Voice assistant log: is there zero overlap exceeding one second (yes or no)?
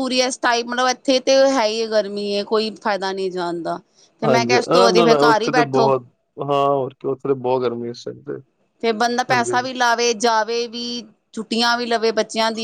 no